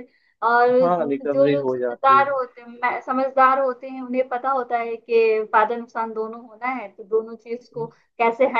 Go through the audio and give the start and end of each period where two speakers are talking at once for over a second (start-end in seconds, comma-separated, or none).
0.8-2.2